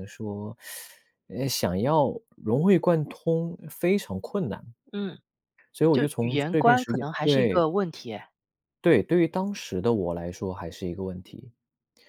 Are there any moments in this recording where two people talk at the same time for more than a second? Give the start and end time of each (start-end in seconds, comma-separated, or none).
5.9-7.7